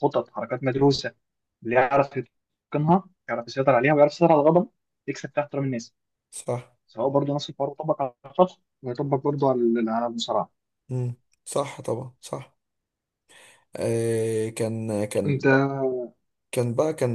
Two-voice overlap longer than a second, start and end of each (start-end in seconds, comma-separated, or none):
none